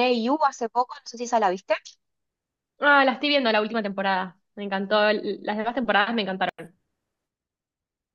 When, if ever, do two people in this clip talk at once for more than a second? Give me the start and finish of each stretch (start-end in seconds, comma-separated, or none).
none